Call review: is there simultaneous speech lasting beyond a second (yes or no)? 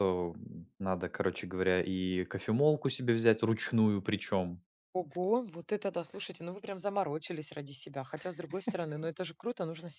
no